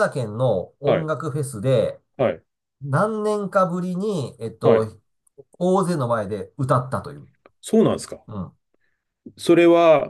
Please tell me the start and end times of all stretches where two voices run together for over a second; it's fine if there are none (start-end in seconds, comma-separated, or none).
none